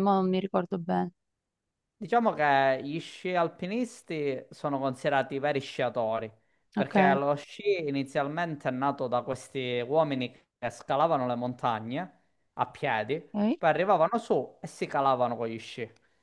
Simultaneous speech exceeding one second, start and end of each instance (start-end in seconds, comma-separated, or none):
none